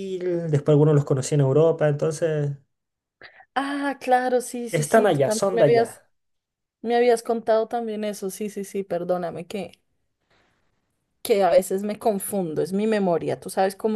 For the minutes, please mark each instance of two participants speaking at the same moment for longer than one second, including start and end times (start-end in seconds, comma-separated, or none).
4.7-6.0